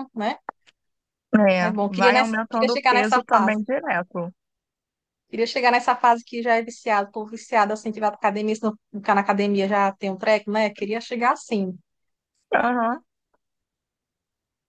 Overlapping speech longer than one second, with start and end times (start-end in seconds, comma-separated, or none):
1.7-3.6